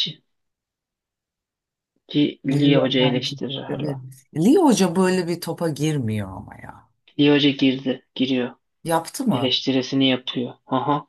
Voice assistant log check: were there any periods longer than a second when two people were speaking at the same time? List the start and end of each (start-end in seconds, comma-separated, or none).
2.5-4.0